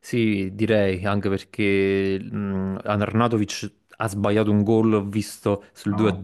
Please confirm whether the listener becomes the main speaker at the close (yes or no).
no